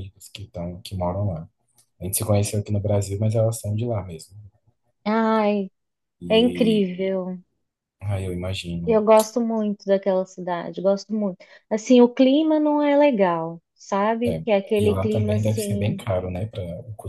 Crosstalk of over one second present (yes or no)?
yes